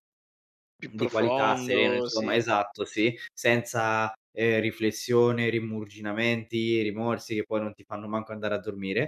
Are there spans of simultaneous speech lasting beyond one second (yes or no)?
yes